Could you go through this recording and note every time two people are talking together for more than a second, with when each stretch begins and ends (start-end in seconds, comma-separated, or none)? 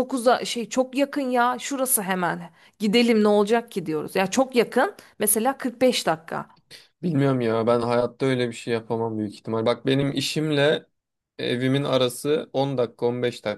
none